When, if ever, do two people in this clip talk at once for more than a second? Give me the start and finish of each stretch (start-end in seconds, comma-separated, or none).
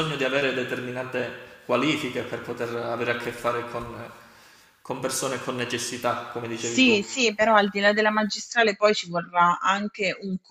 none